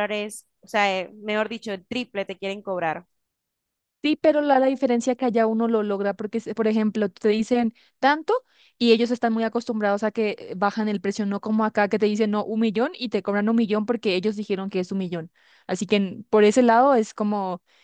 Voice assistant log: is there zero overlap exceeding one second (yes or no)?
yes